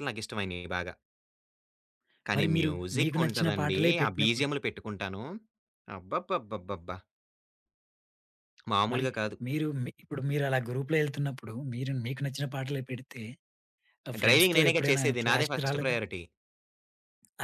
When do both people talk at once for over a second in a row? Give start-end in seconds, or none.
2.4-4.5, 14.2-16.0